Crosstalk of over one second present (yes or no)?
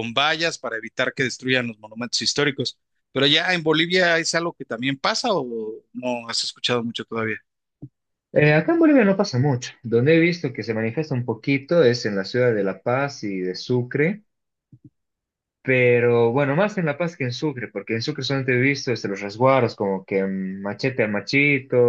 no